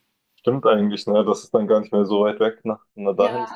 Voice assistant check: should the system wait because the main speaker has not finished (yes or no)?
no